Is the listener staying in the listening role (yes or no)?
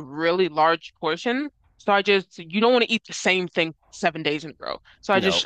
yes